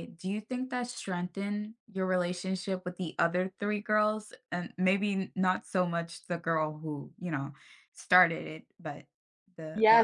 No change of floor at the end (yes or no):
no